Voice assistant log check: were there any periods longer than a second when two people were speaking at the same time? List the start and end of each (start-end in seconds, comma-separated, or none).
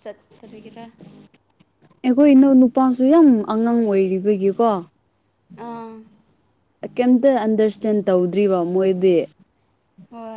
none